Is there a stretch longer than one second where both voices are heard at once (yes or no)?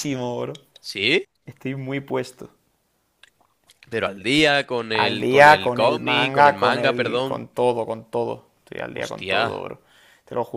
yes